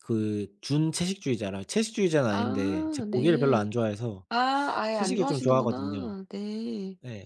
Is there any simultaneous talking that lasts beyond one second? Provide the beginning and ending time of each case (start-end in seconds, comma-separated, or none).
2.3-3.7, 4.9-6.1